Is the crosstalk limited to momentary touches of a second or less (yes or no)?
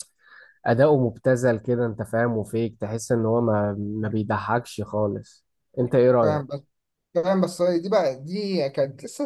yes